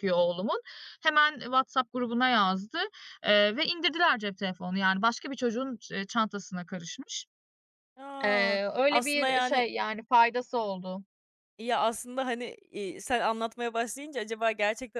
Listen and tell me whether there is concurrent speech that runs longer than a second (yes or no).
yes